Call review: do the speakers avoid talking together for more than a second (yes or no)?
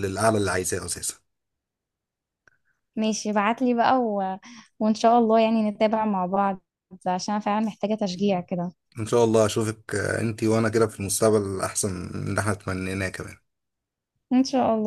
yes